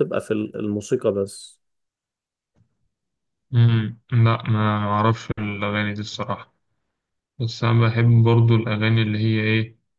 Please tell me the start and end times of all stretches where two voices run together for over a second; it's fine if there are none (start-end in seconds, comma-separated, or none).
none